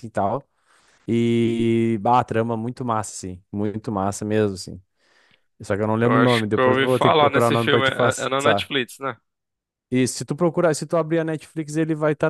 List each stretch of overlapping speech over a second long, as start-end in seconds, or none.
6.0-8.7